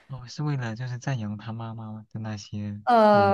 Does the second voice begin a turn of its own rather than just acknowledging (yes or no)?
yes